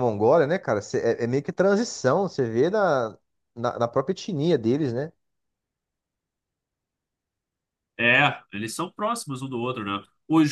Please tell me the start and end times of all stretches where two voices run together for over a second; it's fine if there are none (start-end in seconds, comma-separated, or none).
none